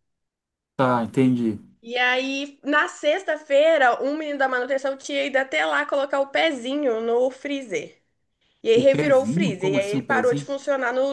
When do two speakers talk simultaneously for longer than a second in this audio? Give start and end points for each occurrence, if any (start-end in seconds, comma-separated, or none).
8.7-10.5